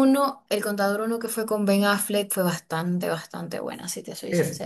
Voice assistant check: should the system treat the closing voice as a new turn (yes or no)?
yes